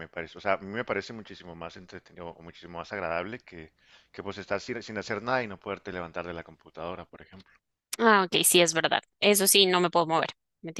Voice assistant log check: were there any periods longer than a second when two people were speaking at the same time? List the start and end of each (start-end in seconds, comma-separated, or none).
none